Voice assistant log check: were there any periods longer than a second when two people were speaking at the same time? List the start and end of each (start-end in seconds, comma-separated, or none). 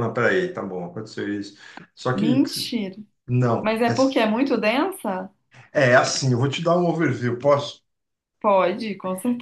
none